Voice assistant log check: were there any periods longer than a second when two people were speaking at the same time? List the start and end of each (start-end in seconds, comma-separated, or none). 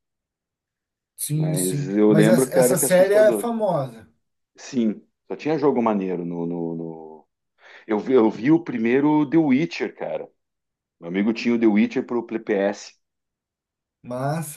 1.3-3.5